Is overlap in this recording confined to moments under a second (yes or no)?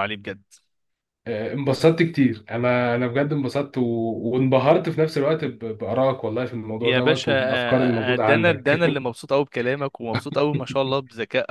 no